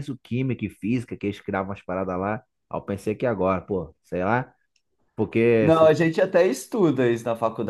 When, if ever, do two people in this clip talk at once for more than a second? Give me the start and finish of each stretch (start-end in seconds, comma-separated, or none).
none